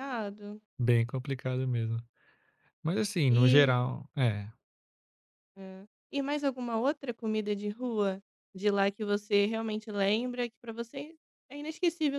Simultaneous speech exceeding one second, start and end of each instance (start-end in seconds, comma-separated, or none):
none